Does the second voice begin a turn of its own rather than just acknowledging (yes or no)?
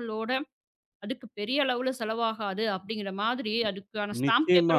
yes